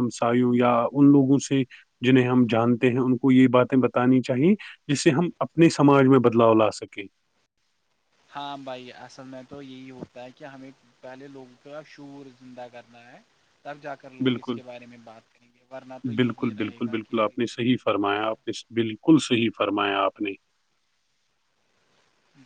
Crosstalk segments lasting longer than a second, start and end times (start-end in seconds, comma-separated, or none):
16.2-18.4